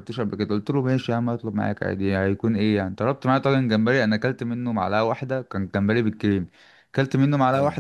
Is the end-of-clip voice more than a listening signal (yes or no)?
no